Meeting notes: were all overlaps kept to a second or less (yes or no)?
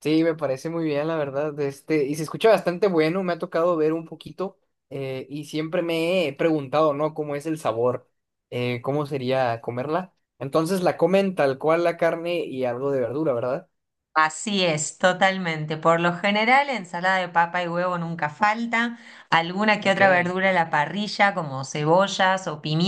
yes